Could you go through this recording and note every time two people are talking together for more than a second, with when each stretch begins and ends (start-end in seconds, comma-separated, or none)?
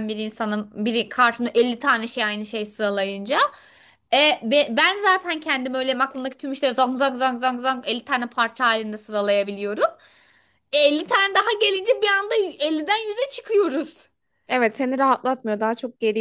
none